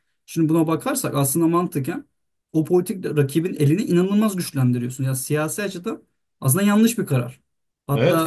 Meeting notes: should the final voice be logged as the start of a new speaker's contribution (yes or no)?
yes